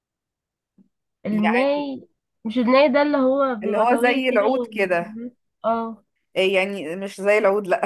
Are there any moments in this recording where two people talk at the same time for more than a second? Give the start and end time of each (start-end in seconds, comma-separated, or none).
3.6-5.2